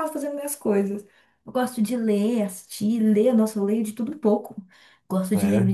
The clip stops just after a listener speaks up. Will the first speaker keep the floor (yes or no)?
yes